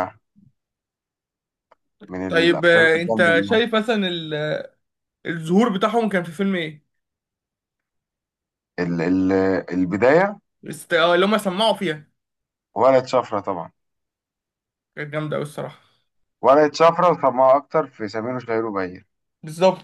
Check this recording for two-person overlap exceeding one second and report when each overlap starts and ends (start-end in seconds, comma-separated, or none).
2.3-3.6